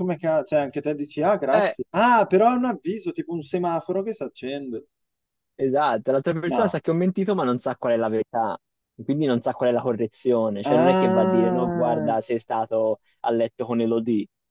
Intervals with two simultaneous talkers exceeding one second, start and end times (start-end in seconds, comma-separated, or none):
10.6-12.1